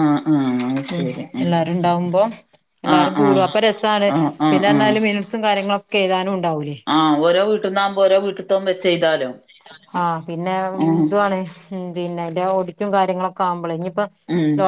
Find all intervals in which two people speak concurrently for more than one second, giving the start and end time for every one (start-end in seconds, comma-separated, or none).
none